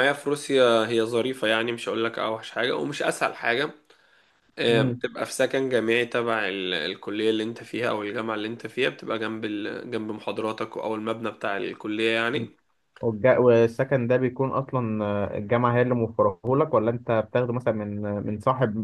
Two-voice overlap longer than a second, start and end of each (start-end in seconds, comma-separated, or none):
none